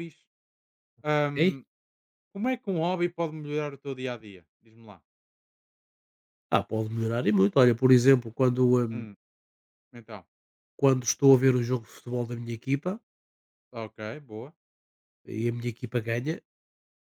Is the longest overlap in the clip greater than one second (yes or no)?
no